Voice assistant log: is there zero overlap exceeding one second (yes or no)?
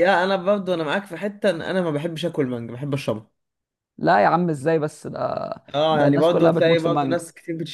no